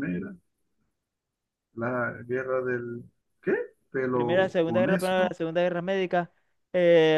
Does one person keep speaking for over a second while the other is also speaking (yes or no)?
yes